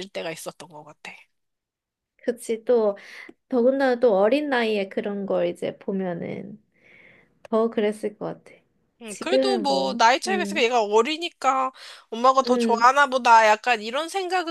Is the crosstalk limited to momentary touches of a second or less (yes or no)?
no